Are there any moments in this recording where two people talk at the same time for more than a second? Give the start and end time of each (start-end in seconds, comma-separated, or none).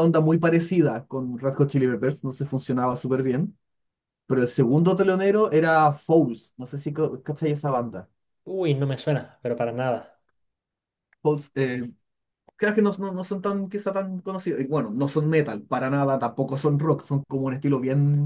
none